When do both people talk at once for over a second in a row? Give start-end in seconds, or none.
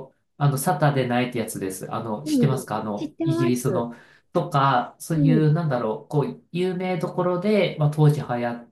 2.2-3.9